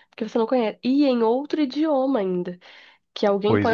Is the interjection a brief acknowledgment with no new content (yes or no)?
yes